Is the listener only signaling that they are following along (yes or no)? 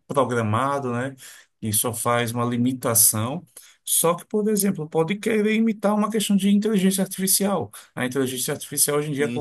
yes